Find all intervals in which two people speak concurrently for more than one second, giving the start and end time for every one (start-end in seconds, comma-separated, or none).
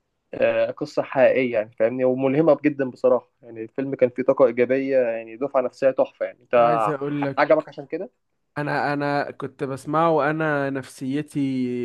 none